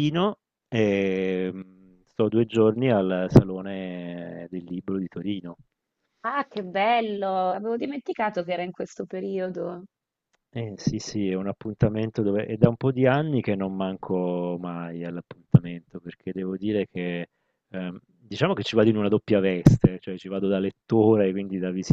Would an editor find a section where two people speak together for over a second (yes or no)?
no